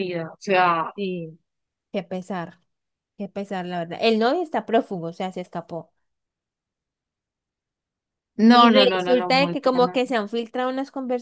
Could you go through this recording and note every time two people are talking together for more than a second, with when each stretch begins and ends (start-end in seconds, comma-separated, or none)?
8.5-10.0